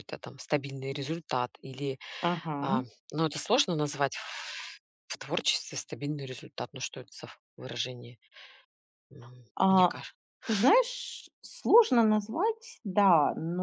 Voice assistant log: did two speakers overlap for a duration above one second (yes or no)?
no